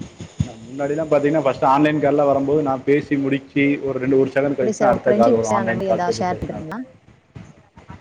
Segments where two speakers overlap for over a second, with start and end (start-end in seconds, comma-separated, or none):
4.6-6.3